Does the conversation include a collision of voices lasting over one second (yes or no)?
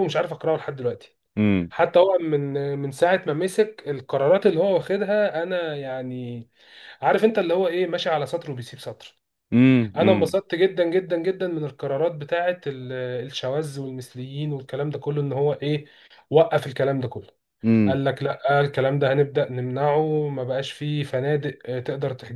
no